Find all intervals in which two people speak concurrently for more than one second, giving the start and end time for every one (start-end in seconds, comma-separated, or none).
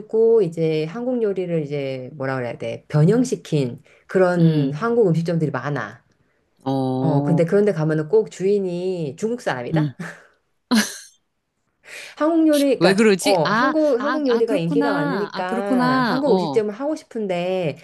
12.8-16.6